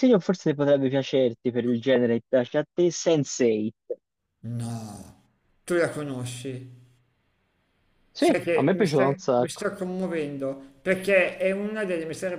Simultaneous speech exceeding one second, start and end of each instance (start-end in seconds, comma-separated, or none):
8.2-9.7